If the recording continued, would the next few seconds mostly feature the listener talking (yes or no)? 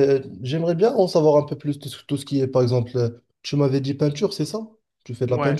yes